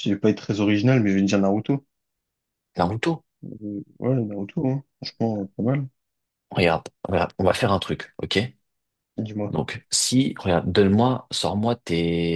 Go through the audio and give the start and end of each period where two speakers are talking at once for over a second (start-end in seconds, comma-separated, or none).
none